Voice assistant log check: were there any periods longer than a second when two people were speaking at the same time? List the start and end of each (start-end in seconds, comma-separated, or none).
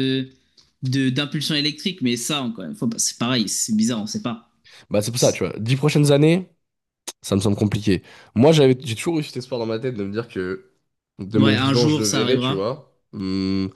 11.4-12.6